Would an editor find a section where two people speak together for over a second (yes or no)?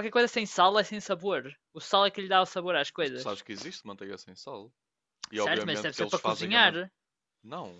yes